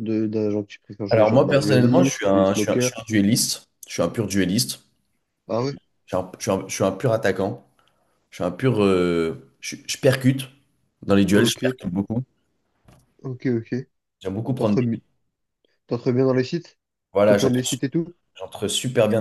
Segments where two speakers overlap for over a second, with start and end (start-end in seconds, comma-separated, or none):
1.1-2.9